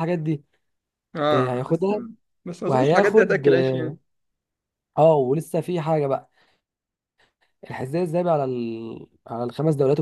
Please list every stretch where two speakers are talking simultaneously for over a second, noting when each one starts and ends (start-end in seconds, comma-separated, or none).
2.7-4.0